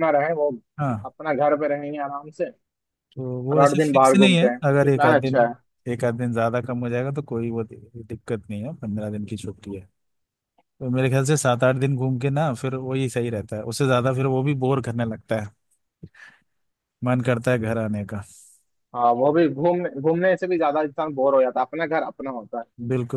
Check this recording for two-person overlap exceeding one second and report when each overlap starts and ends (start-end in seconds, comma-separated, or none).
3.5-5.4